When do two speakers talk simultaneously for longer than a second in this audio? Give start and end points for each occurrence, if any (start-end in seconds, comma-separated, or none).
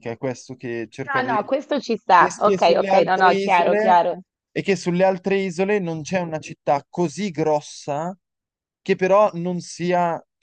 2.2-4.0